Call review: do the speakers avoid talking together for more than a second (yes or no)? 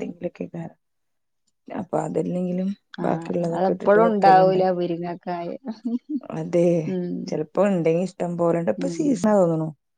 no